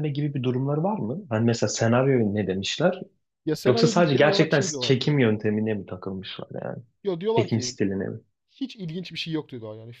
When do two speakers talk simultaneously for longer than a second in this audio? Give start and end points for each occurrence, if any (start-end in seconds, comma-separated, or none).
3.7-5.1